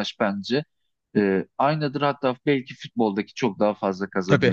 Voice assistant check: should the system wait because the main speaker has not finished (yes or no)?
no